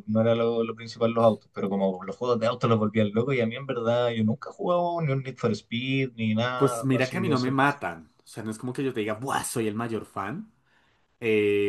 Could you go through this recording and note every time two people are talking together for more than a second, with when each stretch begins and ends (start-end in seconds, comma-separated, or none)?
6.5-7.8